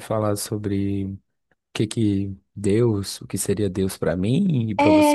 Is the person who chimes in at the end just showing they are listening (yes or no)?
no